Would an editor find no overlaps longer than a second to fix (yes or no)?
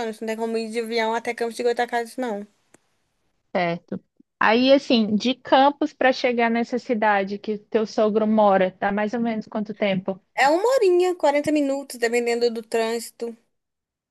yes